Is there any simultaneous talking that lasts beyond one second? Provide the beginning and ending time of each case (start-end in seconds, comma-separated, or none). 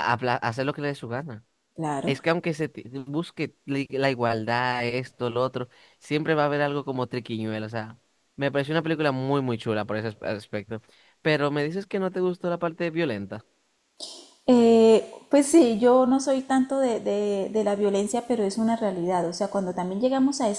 none